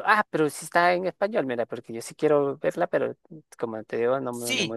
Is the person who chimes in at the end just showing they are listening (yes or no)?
no